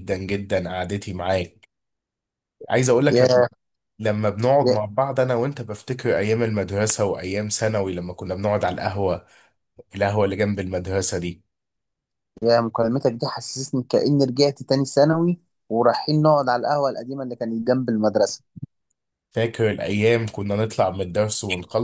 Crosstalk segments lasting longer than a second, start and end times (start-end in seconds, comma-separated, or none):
none